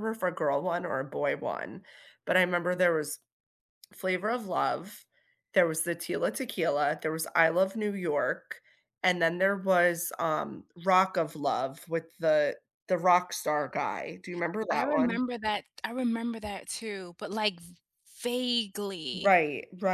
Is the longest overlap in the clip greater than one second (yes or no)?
no